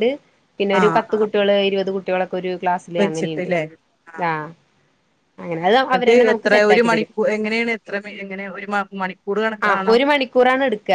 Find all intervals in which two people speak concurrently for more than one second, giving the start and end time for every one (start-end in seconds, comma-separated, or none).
none